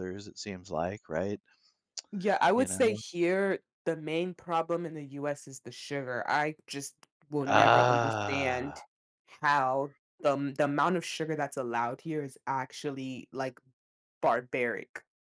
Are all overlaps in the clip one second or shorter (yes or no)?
no